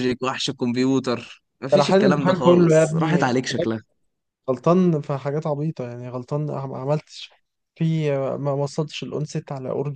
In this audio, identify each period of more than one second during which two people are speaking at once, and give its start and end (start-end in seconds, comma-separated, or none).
1.7-3.3